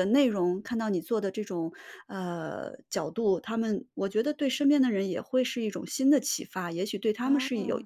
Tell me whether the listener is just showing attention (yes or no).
yes